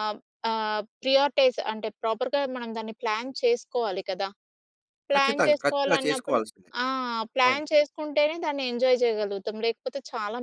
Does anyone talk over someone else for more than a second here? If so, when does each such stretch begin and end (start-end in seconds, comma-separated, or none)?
5.1-6.4